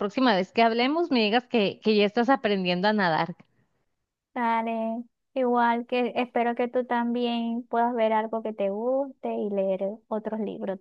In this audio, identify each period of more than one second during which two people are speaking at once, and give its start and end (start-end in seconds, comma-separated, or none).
none